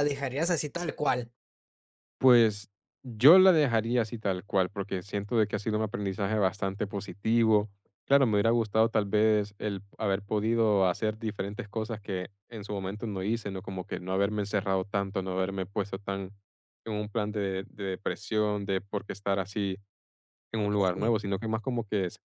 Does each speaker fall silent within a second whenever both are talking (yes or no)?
yes